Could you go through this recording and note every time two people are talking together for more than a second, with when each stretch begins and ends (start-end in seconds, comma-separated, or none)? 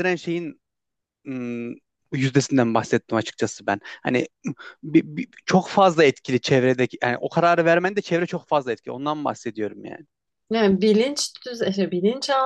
none